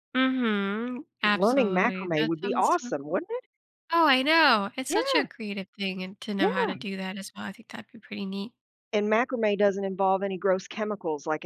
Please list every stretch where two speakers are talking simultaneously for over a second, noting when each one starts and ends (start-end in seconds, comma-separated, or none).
1.2-3.2